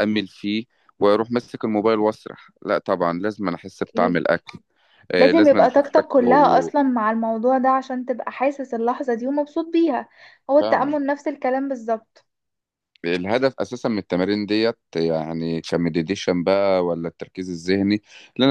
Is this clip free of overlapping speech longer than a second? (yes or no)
no